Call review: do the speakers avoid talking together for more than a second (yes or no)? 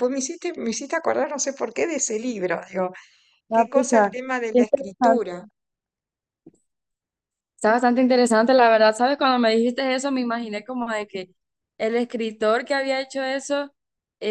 no